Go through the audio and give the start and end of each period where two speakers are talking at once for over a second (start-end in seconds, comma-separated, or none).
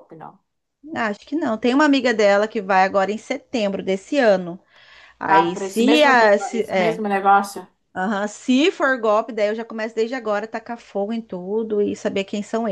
5.3-7.0